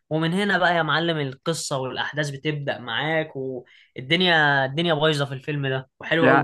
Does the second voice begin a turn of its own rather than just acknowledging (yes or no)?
yes